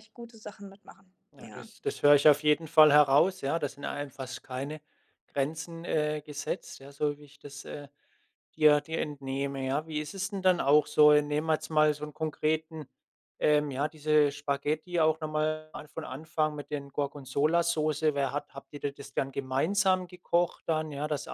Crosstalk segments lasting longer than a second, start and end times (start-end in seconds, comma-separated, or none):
none